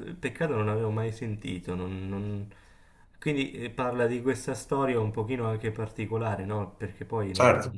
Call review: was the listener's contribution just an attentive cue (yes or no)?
yes